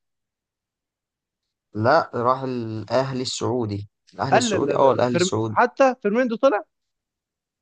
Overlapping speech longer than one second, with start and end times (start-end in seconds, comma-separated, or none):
4.3-5.6